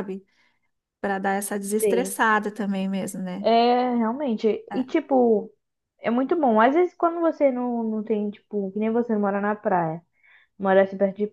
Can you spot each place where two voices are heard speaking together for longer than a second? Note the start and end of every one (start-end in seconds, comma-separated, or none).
none